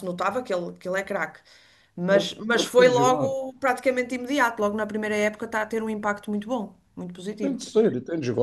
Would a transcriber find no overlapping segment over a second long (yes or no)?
no